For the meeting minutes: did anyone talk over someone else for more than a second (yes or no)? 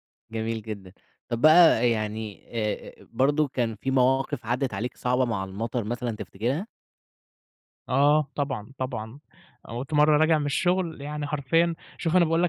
no